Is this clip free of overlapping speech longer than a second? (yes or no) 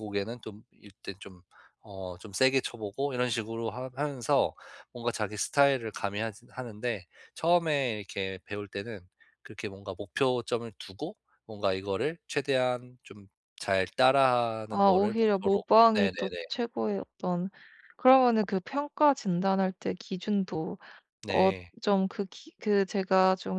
no